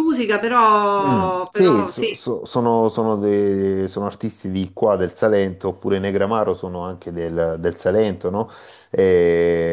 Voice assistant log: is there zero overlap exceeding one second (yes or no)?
no